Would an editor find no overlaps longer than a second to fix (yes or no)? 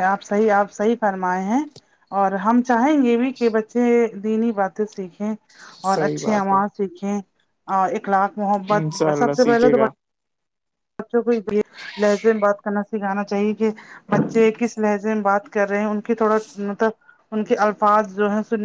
no